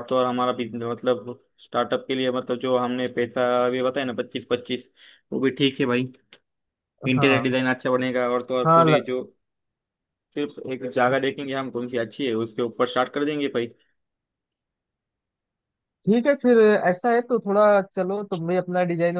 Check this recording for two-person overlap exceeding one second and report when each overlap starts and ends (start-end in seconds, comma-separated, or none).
none